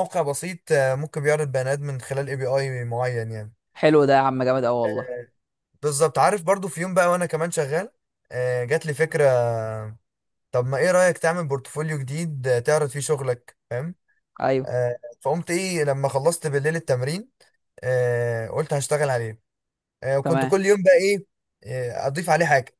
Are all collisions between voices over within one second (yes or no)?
yes